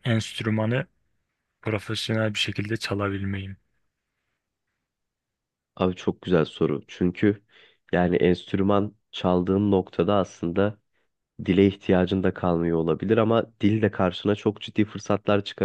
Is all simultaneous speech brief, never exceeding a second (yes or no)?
yes